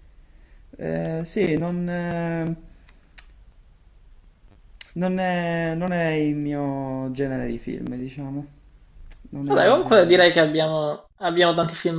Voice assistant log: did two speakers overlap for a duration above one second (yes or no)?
yes